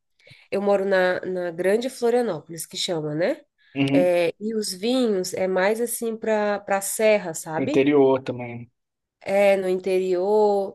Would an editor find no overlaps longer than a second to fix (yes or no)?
yes